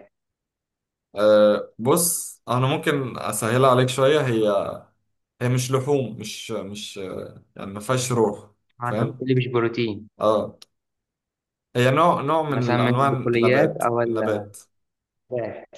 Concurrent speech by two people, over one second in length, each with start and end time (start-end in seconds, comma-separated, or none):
12.5-14.2